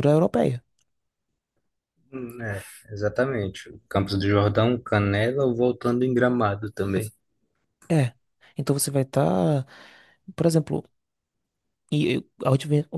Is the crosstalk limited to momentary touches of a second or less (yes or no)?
yes